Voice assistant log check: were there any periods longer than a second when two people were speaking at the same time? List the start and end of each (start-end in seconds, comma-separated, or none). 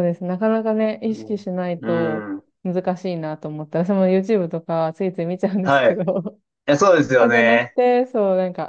1.1-2.4